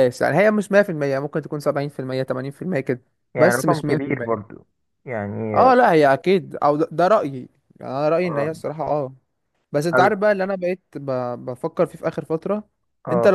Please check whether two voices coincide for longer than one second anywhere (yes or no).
yes